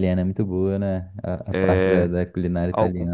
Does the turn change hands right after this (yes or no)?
yes